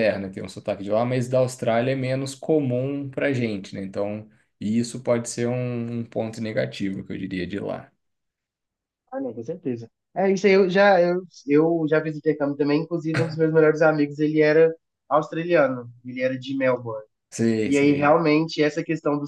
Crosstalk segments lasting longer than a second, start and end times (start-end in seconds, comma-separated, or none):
none